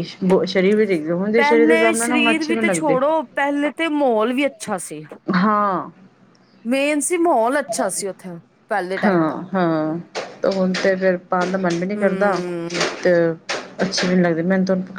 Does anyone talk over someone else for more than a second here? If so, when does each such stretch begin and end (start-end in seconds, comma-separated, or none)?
1.4-3.0